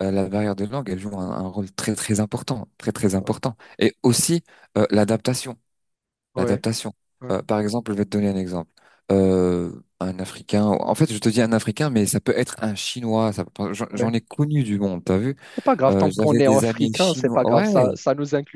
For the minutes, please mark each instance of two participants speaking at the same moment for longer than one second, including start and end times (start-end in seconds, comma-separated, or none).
15.9-17.7